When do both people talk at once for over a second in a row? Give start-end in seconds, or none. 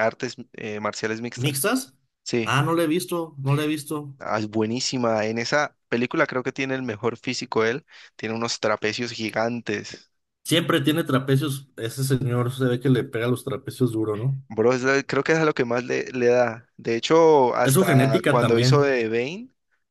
17.6-19.0